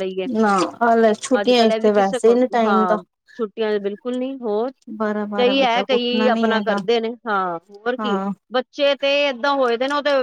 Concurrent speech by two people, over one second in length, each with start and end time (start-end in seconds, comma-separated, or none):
5.4-6.8